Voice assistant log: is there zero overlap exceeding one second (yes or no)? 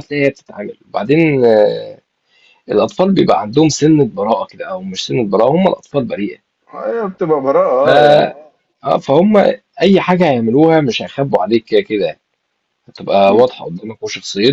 yes